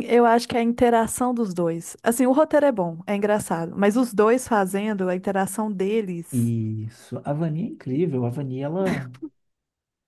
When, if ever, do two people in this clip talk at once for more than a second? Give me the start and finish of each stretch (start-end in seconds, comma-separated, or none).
none